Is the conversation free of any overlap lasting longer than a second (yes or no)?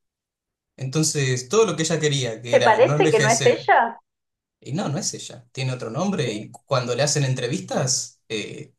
no